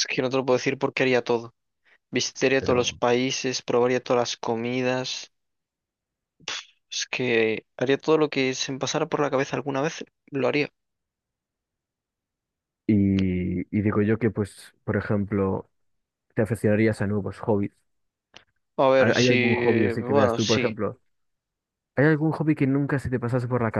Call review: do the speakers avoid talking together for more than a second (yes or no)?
no